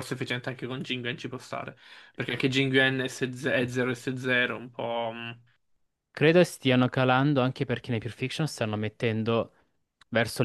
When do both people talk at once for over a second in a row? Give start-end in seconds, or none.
none